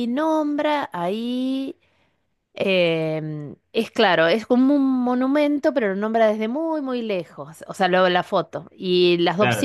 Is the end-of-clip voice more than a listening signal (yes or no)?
no